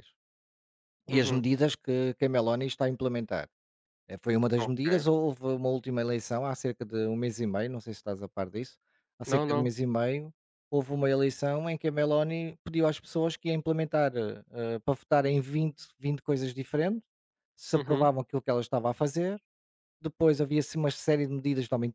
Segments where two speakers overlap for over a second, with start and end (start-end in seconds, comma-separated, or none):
none